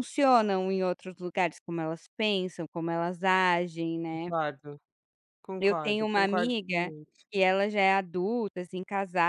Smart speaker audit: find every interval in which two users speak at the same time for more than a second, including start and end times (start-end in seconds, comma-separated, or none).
5.6-6.9